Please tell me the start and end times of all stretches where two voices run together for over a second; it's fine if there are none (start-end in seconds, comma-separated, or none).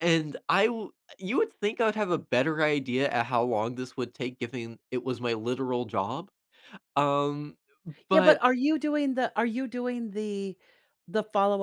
none